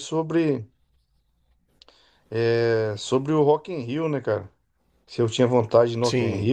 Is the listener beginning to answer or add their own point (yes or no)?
no